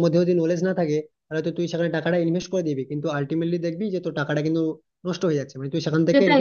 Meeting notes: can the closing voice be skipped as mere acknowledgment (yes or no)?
no